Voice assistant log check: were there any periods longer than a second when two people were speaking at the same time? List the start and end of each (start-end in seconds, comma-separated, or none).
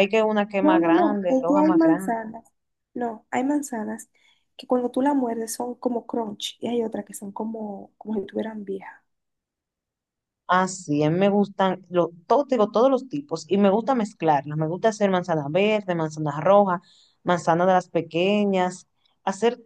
0.6-2.2